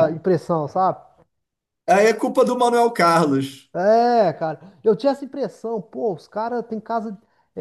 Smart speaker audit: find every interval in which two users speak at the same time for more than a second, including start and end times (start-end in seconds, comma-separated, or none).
none